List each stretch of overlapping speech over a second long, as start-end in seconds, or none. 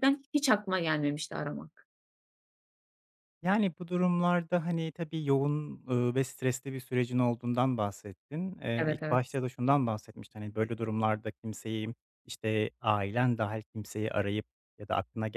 none